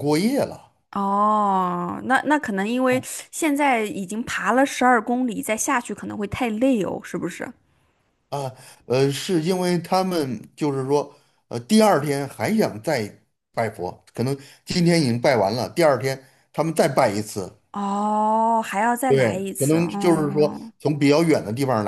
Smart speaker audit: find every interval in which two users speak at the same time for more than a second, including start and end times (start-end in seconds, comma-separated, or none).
19.1-20.7